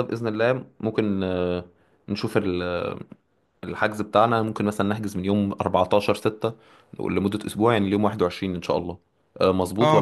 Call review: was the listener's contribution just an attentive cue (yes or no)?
no